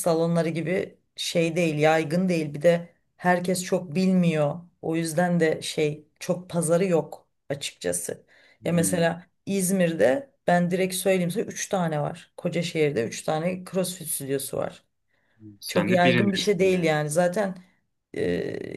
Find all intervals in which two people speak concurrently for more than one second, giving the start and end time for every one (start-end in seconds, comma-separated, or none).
15.7-16.9